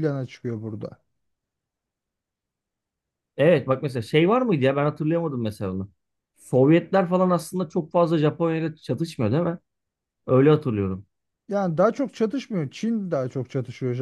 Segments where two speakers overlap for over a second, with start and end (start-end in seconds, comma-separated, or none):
none